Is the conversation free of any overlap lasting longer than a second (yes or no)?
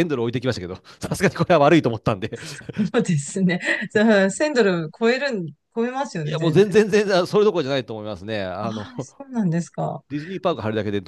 yes